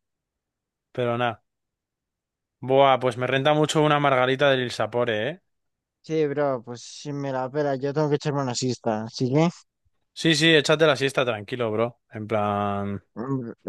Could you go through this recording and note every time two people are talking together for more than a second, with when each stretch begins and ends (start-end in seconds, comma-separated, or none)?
none